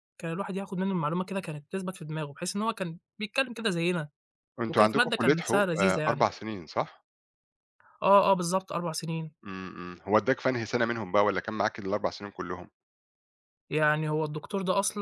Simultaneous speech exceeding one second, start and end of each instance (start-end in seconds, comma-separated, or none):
4.7-6.3